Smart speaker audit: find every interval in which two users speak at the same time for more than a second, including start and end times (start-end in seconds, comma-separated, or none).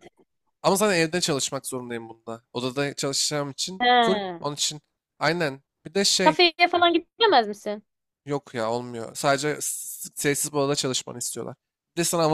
none